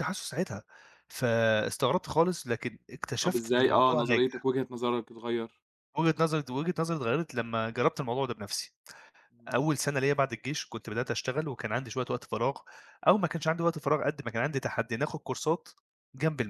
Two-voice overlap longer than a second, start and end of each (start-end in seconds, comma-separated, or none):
3.2-4.5